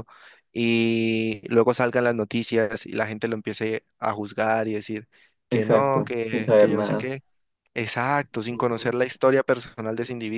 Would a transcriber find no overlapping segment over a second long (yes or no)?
no